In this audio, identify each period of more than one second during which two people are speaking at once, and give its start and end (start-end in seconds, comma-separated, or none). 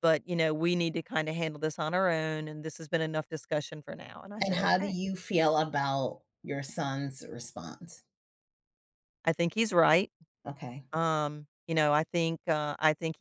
none